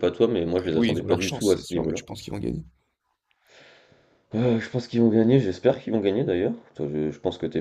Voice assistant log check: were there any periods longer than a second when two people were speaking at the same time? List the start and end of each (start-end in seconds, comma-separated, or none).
0.6-2.0